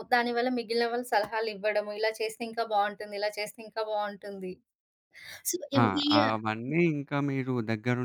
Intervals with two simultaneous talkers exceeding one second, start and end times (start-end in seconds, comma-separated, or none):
none